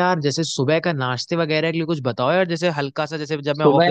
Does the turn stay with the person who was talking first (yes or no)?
no